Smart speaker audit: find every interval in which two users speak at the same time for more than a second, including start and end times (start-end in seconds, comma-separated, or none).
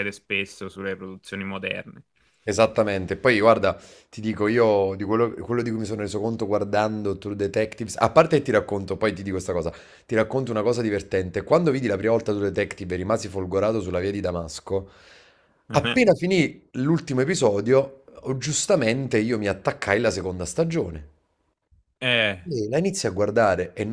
none